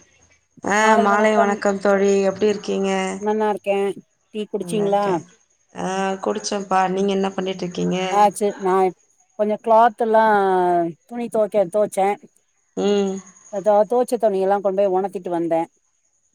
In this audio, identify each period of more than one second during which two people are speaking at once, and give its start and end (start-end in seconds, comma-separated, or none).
none